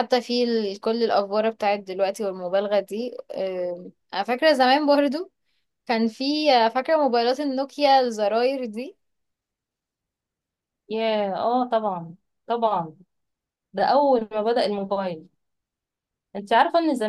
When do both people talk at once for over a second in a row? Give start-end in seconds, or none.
none